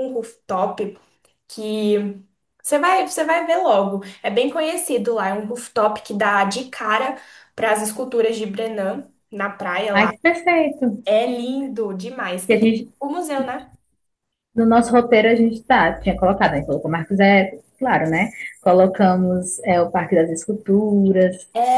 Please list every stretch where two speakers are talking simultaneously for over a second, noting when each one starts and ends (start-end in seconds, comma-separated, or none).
none